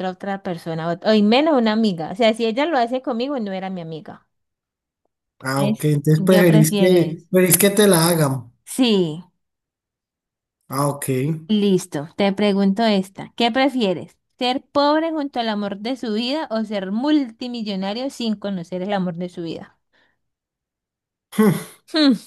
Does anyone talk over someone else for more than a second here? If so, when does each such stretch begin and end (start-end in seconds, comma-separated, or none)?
5.6-7.3